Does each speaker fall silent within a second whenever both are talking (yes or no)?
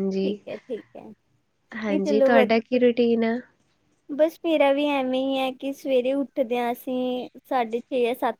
yes